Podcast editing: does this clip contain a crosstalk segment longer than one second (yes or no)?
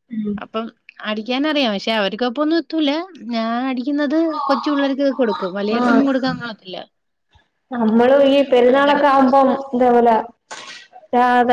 no